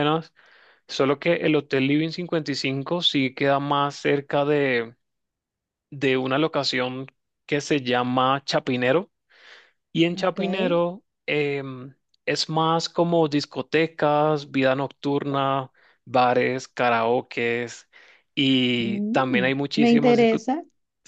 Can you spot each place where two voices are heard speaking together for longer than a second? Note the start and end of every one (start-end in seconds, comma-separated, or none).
18.8-20.5